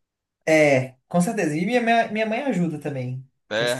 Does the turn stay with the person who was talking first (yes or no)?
yes